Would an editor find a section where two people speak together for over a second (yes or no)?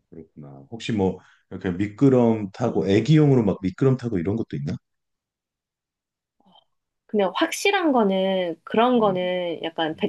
no